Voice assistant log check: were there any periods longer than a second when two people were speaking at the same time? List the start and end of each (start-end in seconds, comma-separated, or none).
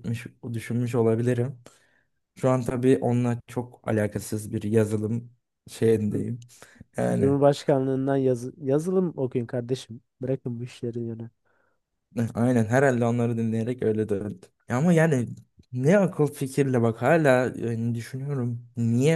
none